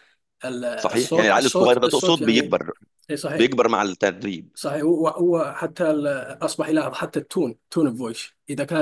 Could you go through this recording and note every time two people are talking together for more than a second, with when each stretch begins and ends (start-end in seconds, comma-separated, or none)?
0.8-2.5